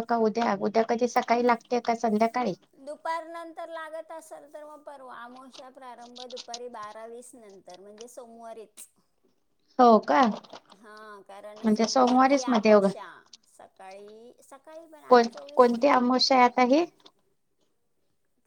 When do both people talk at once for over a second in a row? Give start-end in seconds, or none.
11.6-12.9